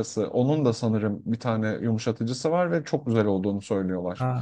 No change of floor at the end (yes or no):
no